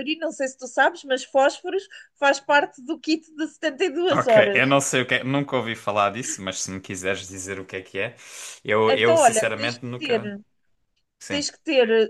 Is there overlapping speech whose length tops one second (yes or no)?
yes